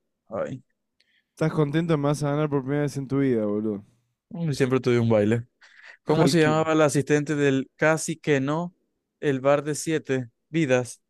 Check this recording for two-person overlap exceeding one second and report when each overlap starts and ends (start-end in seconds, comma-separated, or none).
none